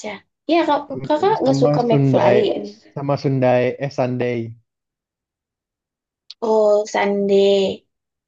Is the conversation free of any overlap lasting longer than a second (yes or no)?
no